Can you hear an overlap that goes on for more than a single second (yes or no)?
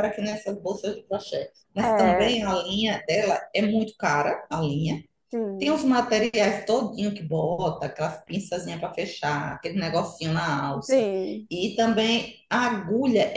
no